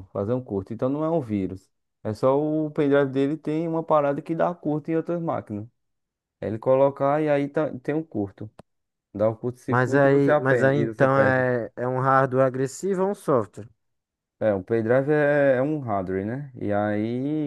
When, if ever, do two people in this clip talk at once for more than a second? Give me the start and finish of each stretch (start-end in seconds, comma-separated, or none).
9.7-11.4